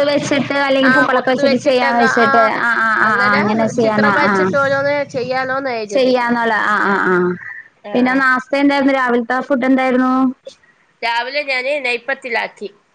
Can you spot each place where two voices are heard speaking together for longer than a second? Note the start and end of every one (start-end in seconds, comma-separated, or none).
0.9-2.5